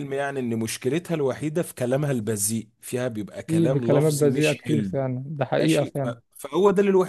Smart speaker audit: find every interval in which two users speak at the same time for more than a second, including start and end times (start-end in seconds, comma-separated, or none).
3.5-4.9